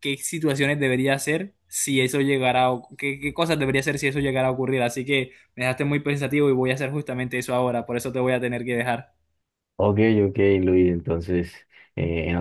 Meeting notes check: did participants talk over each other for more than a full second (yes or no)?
no